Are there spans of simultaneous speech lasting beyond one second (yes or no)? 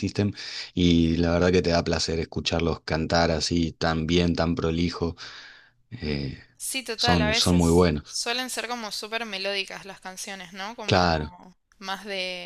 yes